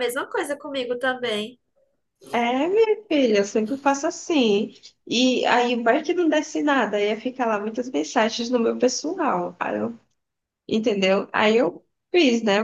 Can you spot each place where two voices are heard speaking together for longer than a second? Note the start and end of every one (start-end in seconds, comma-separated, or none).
none